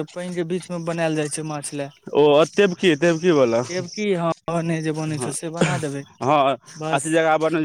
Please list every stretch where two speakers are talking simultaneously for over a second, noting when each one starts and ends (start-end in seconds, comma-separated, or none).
none